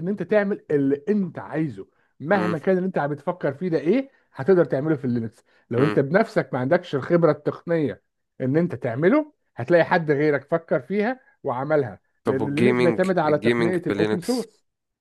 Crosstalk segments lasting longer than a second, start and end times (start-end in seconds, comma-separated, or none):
12.2-14.4